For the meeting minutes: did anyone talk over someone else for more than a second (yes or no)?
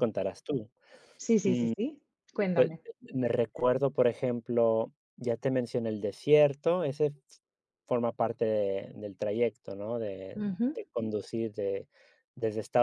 no